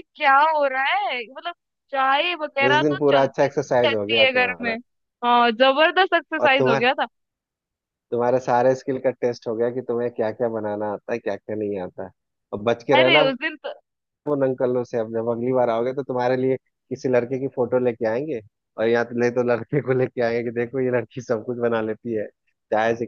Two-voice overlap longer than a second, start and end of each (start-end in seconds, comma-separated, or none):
2.7-4.7